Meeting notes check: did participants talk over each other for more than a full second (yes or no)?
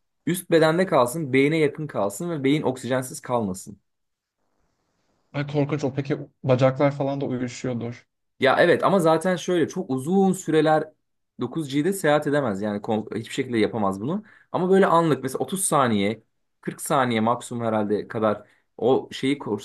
no